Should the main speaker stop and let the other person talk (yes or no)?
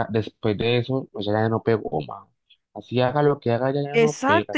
yes